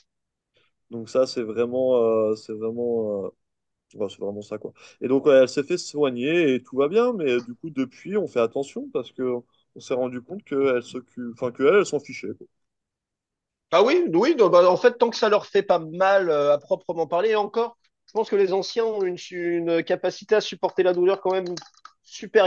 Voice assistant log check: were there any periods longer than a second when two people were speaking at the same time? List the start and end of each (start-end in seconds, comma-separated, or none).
none